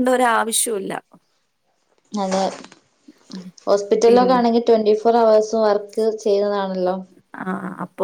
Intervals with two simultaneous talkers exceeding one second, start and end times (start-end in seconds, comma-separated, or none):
none